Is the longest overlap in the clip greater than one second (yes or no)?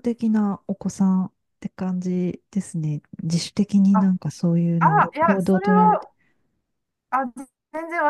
yes